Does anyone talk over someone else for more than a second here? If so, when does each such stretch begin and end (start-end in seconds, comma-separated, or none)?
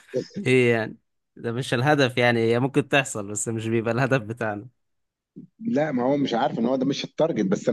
none